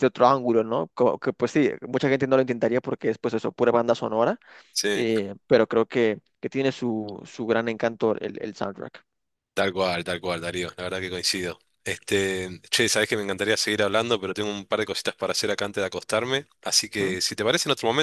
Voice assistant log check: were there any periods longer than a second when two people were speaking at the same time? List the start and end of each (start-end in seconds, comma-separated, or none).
none